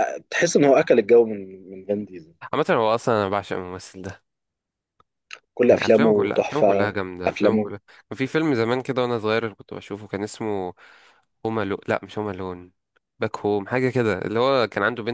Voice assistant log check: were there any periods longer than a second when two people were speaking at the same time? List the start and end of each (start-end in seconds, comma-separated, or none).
5.6-7.7